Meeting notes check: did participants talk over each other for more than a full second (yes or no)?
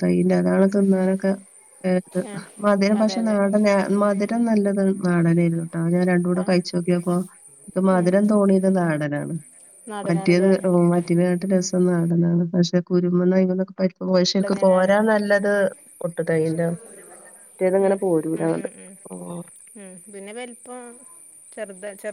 no